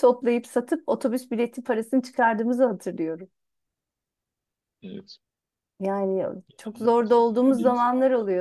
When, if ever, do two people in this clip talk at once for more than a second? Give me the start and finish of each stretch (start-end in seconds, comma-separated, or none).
6.6-7.8